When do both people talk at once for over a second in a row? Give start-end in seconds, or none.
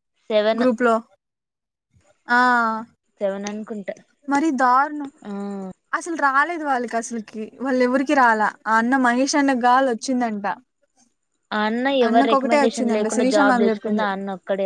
12.1-14.1